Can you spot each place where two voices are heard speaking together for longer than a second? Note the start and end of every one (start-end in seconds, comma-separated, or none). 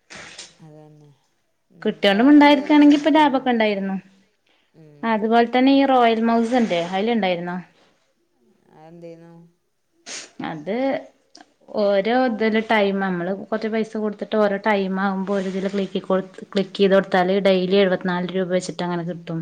1.8-3.4